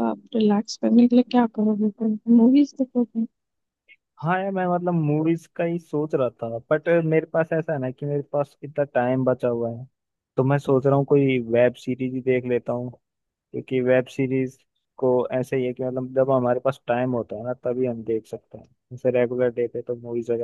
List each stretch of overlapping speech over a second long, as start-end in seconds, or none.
none